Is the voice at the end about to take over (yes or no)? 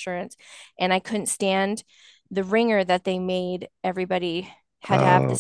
no